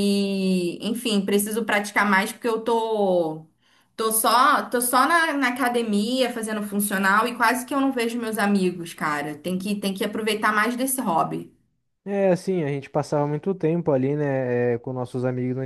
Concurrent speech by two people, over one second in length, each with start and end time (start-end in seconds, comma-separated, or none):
none